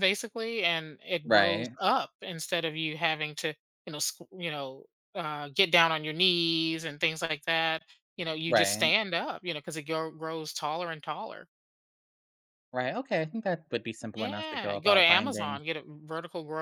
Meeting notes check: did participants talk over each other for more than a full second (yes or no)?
yes